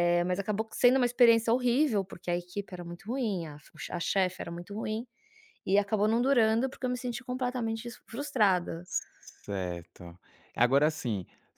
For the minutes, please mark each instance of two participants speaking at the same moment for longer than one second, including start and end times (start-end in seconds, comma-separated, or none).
none